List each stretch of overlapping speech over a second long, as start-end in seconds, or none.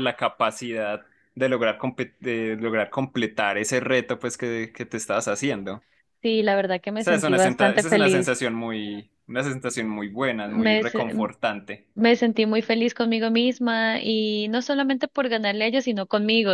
7.0-8.4